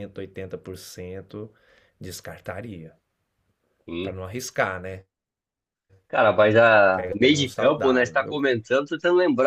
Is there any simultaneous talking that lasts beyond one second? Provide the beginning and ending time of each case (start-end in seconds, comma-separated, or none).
6.9-8.4